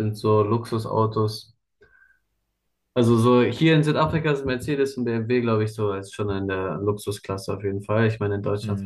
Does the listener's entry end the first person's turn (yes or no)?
no